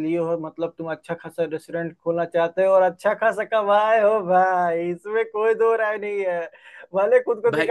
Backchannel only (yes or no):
yes